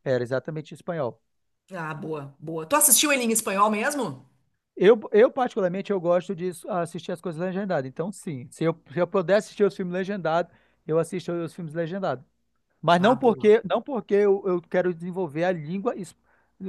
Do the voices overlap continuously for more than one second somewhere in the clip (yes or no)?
no